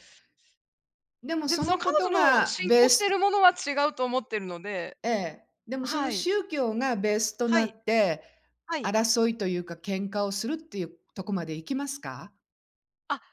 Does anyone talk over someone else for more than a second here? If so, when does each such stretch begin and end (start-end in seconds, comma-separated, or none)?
1.4-3.2